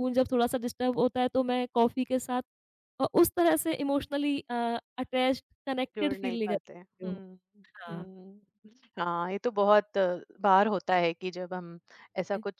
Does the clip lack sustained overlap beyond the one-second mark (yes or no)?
no